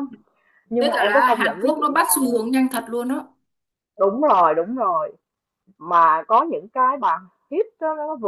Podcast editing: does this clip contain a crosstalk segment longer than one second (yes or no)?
yes